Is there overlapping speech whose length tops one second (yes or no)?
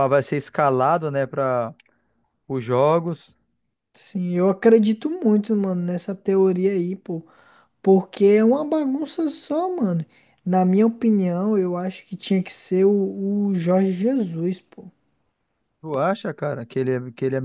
no